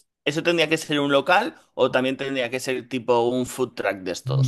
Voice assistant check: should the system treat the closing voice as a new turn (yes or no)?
yes